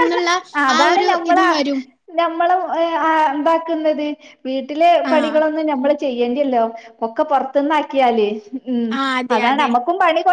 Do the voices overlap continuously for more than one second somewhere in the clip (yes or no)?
no